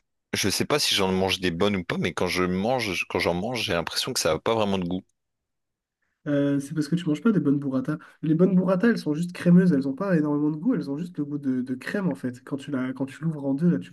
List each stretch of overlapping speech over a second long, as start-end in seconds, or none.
none